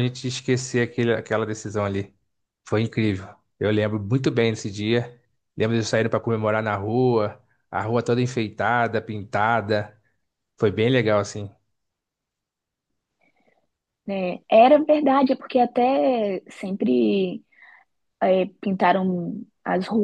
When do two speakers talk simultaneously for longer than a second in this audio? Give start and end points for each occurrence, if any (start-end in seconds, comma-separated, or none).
none